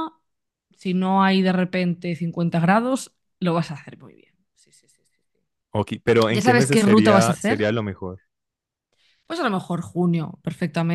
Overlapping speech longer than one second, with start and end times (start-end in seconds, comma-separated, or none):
6.3-7.7